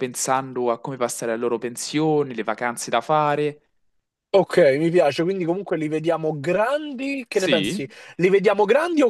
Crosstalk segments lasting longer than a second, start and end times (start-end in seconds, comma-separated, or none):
none